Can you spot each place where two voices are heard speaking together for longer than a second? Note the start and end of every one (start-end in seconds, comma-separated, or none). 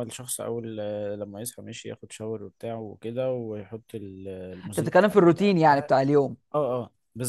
4.6-5.9